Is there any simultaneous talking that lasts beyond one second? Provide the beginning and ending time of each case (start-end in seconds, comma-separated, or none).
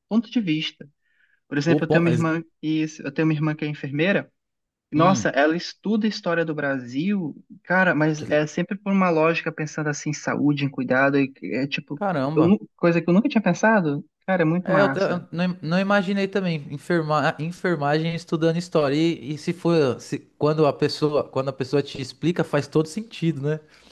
none